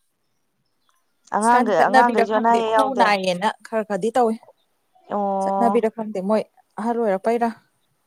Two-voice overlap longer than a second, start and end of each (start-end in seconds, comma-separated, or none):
1.4-3.0